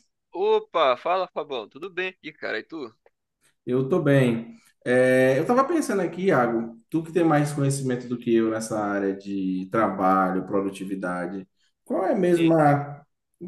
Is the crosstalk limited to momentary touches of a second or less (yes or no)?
yes